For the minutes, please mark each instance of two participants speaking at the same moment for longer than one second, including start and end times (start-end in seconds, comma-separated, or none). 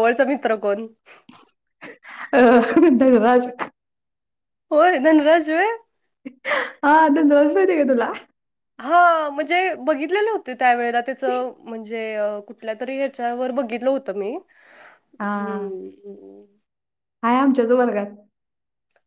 none